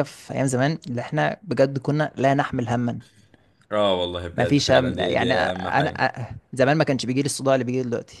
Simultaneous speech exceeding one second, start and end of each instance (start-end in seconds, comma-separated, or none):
4.3-5.9